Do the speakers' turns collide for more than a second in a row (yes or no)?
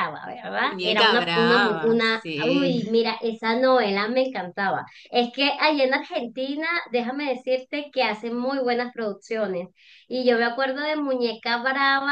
yes